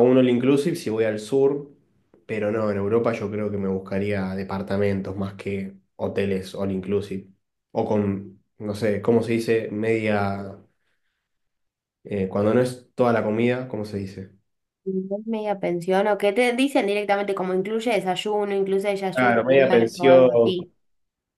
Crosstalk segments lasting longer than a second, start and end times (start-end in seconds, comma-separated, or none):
19.1-20.5